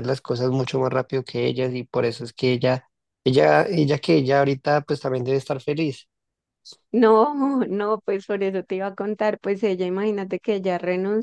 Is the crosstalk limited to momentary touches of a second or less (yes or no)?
yes